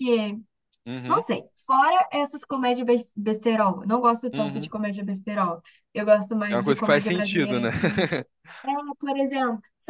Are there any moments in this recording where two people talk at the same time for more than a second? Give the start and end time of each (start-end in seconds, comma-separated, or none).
6.5-7.7